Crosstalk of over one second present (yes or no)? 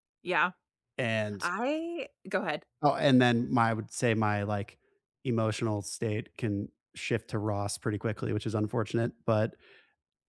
no